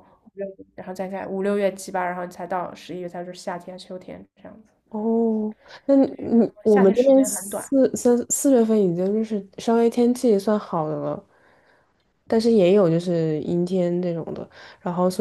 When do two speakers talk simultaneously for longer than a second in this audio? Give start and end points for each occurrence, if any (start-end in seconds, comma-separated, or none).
6.0-7.7